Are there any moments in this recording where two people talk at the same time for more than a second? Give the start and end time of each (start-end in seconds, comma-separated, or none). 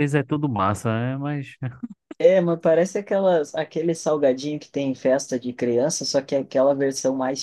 none